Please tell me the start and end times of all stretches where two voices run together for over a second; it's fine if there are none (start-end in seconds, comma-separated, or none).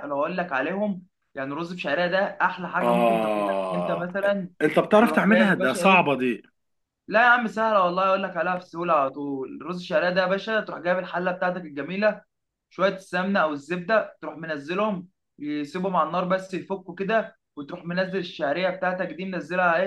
2.8-4.1, 5.0-6.2